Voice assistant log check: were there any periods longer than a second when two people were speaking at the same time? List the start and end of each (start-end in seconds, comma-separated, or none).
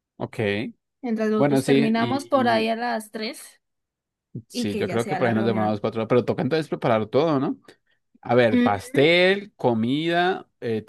1.4-2.7, 4.5-5.9